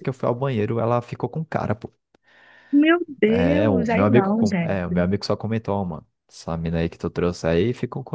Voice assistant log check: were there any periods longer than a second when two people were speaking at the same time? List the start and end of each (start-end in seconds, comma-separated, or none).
3.3-5.0